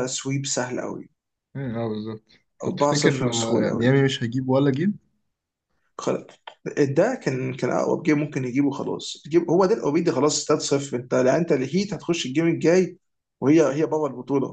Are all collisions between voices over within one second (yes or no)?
no